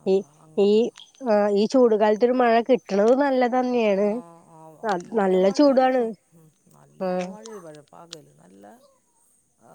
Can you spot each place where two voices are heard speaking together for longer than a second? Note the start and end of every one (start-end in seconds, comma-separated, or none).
none